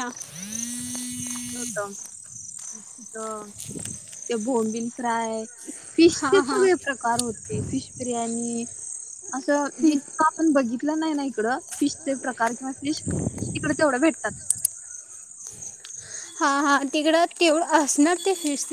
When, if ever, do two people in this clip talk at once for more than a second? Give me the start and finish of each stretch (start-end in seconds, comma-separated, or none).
none